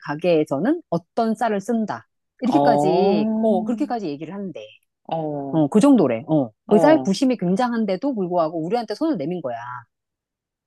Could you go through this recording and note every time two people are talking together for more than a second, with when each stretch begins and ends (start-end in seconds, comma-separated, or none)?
2.4-3.9